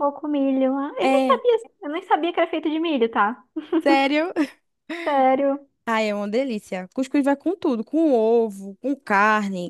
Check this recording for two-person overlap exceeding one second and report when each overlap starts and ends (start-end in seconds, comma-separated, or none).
none